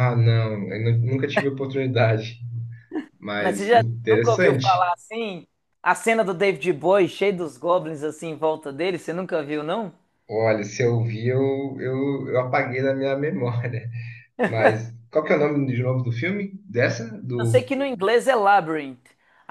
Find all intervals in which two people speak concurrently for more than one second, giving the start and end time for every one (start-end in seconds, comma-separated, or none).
3.4-4.9